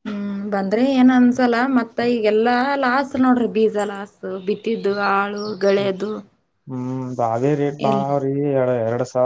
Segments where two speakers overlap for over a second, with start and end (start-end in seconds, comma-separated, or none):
none